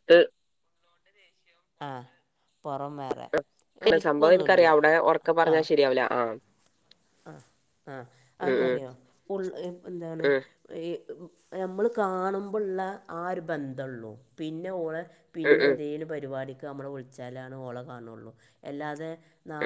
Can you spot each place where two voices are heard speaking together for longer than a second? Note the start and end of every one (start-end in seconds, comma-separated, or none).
none